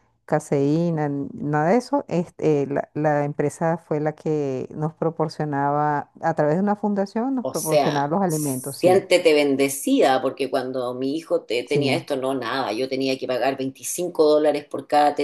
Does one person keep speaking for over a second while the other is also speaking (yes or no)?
yes